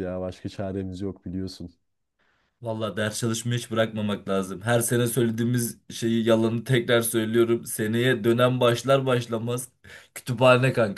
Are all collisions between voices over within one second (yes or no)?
yes